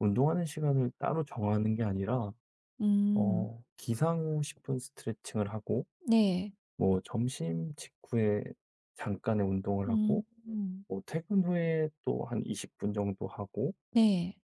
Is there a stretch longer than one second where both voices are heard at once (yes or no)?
no